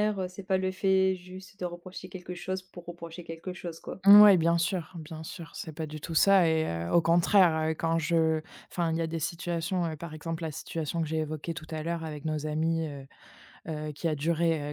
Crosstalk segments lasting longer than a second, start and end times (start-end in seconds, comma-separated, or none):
none